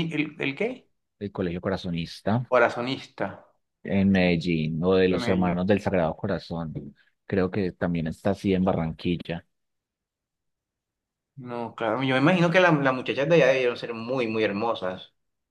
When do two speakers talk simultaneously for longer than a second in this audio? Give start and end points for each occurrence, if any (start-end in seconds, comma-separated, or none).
none